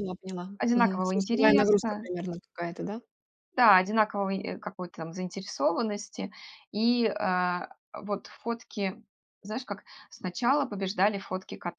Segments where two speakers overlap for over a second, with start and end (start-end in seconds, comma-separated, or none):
0.6-2.1